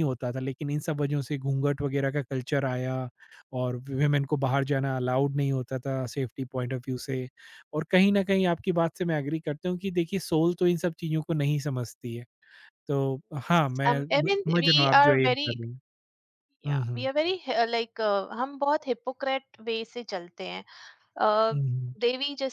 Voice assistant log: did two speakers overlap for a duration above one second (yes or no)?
yes